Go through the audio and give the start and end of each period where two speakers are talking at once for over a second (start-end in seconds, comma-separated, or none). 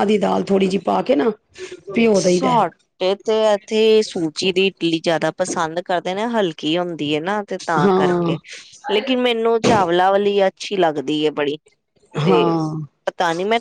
none